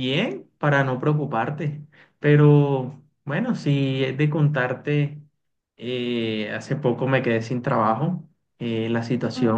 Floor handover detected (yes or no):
no